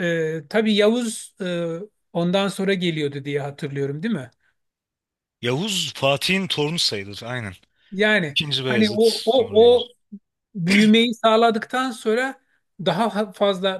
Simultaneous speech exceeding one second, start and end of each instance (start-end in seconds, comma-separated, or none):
8.3-9.9